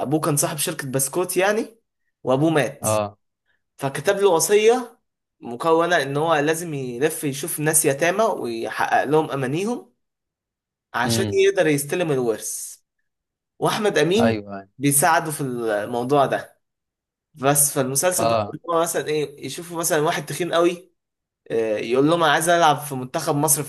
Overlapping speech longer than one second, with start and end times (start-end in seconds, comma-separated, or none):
none